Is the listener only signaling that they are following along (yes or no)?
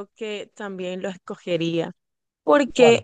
yes